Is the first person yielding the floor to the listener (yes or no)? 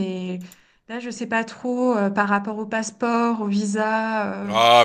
yes